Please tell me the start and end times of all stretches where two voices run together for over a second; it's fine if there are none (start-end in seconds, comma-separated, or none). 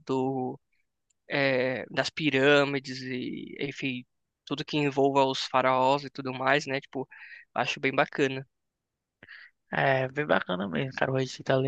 none